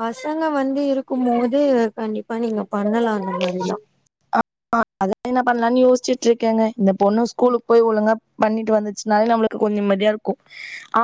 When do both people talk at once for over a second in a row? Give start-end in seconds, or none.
none